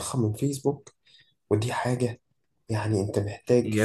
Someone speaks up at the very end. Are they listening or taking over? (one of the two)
taking over